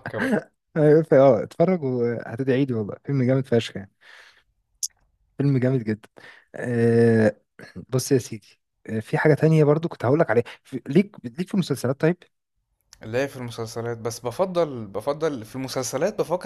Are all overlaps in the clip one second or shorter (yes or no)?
yes